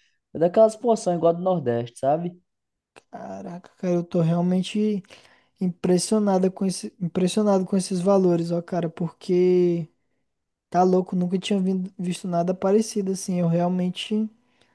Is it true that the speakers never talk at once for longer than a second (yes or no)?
yes